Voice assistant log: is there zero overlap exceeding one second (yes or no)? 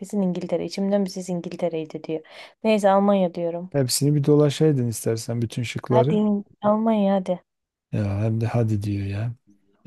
yes